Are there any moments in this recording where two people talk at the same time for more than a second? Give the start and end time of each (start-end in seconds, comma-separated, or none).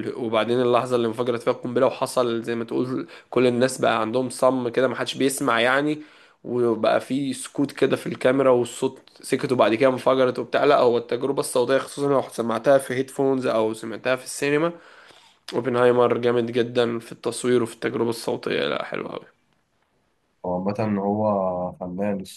none